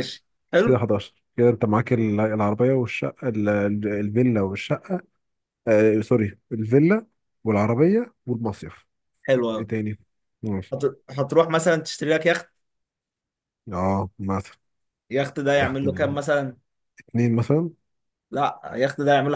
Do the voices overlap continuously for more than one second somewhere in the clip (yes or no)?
no